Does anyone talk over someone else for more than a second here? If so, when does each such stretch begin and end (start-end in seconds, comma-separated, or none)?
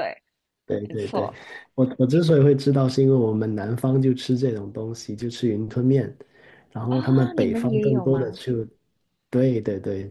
6.9-8.4